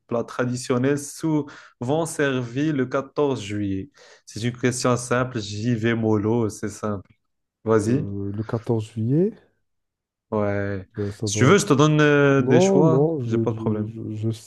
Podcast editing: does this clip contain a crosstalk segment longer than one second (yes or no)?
yes